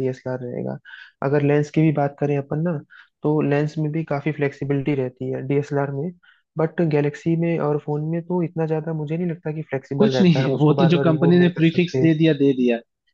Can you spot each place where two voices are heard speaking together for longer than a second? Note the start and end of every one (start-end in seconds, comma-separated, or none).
10.0-12.1